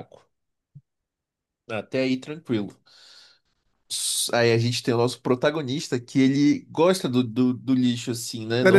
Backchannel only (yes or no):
no